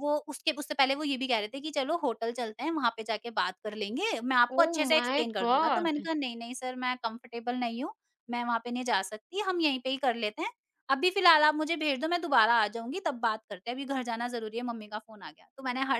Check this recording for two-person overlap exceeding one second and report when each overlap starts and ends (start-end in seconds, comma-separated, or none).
4.6-6.1